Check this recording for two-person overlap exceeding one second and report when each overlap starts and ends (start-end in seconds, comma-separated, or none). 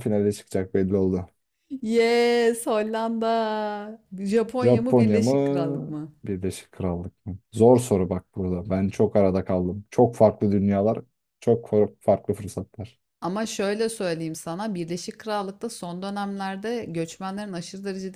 4.6-6.1